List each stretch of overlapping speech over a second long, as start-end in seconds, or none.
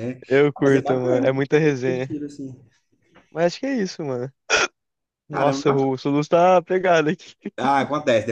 0.6-2.1